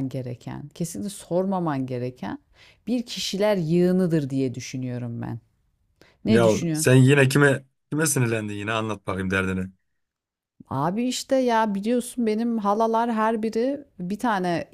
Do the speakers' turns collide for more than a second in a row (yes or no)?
no